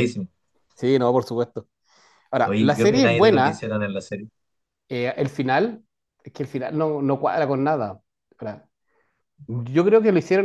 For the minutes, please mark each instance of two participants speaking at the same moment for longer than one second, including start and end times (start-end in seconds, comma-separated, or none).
2.4-3.6